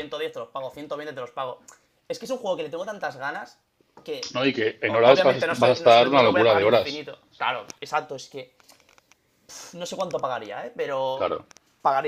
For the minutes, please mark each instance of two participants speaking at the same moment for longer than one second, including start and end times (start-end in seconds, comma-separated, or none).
4.9-6.9